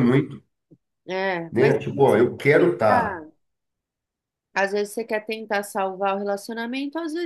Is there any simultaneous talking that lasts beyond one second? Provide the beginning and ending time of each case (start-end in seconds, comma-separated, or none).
1.5-3.2